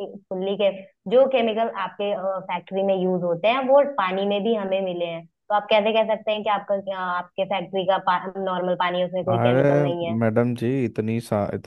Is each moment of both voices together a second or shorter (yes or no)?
yes